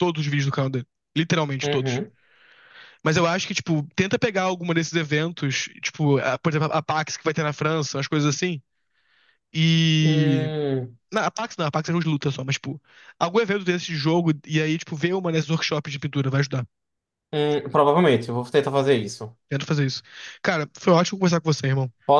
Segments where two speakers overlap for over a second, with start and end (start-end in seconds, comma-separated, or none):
none